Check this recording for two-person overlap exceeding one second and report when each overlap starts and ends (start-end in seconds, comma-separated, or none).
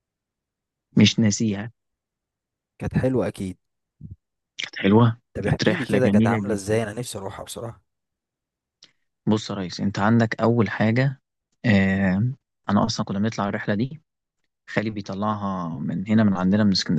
5.3-6.8